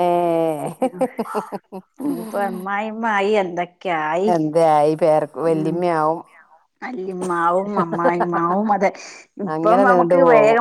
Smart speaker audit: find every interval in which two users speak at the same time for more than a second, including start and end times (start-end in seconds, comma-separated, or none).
none